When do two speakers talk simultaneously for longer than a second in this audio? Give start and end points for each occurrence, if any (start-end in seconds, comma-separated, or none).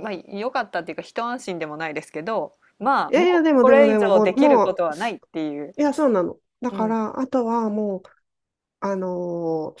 3.1-4.8